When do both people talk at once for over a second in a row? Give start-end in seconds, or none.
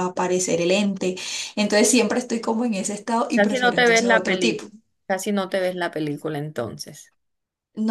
3.3-4.6